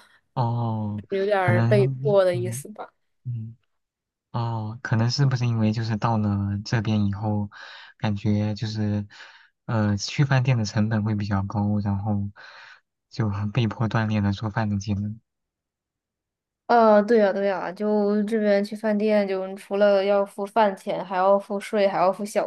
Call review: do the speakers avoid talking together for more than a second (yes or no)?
no